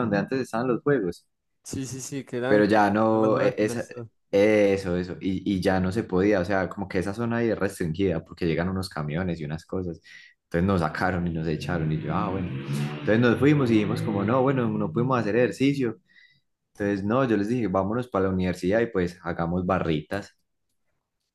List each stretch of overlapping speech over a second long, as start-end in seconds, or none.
2.5-3.9